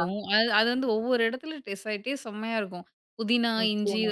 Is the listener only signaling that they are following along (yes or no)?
yes